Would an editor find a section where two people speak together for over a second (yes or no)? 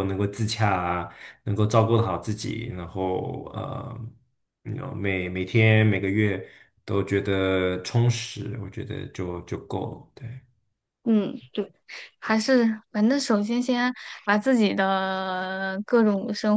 no